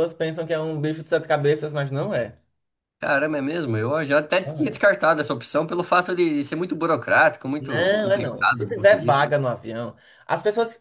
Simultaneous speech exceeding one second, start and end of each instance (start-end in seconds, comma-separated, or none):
7.6-9.2